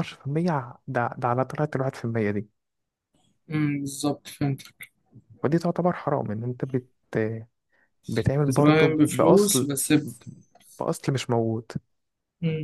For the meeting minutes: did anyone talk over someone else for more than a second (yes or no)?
yes